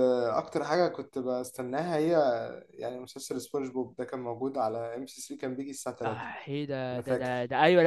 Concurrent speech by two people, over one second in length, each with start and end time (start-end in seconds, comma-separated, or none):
none